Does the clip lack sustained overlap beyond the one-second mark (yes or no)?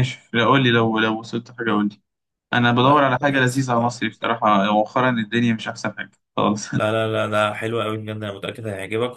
no